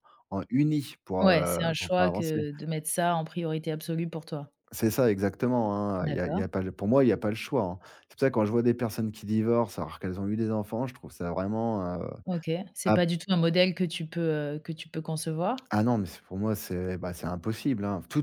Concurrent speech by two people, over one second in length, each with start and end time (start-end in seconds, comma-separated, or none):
1.2-2.4